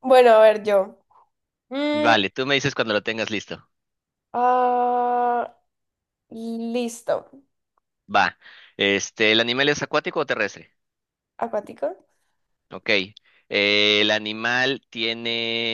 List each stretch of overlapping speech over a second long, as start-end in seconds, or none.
none